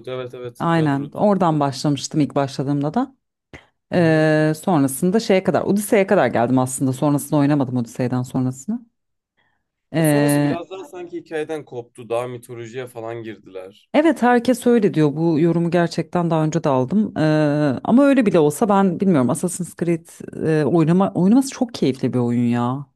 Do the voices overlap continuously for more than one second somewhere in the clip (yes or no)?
no